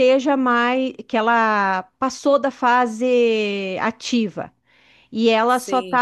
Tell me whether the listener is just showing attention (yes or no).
yes